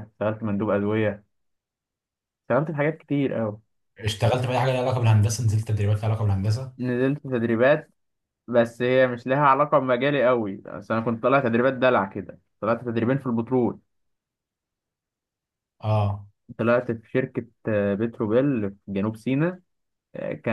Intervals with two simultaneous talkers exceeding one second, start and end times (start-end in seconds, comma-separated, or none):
none